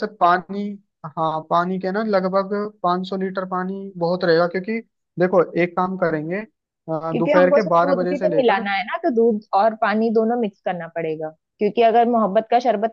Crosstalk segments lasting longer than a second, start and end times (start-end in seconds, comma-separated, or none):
7.1-8.6